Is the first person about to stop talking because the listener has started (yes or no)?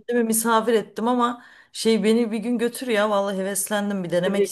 yes